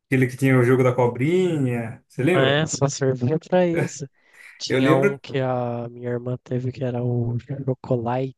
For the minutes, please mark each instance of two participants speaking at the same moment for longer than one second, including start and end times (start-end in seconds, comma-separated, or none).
none